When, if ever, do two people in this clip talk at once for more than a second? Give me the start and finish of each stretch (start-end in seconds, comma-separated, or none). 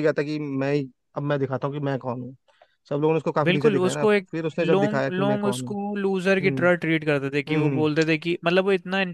3.4-5.8